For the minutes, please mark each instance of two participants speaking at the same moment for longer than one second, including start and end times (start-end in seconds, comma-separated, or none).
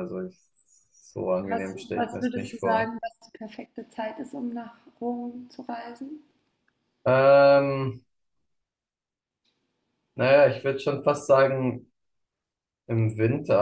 1.5-2.9